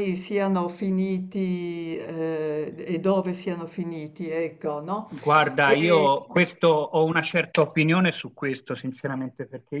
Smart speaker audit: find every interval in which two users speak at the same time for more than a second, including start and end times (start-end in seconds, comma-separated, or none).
none